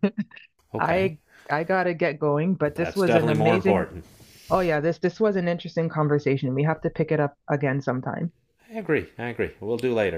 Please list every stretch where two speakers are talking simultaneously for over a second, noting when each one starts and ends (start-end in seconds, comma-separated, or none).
2.6-3.9